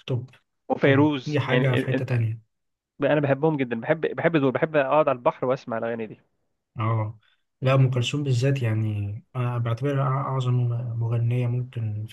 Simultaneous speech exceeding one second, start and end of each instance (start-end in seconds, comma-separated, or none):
0.8-2.1